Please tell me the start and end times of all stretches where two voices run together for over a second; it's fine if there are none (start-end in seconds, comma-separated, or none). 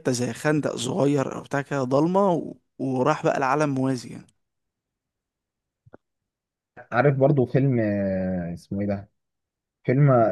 none